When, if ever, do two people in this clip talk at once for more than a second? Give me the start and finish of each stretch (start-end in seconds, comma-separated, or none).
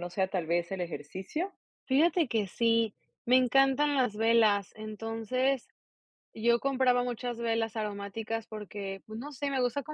none